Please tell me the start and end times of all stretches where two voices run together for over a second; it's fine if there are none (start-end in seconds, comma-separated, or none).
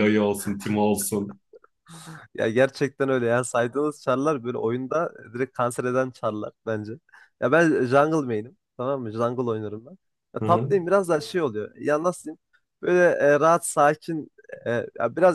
none